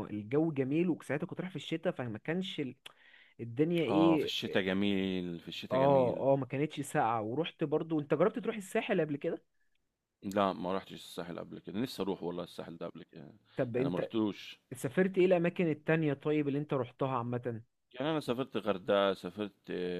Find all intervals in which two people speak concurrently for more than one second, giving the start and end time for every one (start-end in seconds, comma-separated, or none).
none